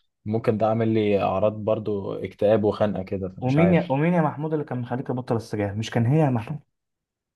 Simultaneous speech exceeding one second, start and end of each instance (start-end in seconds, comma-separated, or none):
none